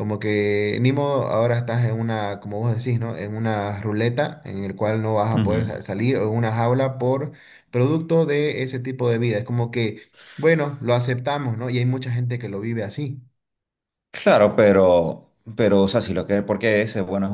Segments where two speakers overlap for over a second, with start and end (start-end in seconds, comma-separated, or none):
none